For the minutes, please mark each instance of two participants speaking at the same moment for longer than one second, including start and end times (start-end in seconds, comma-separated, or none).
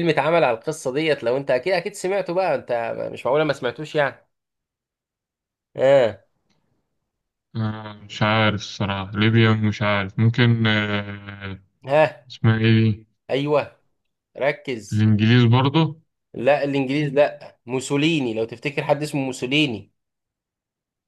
none